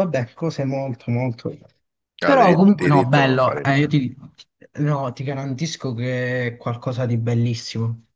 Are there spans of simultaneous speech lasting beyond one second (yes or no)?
yes